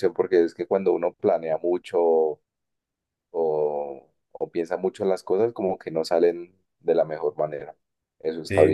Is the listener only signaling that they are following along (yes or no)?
no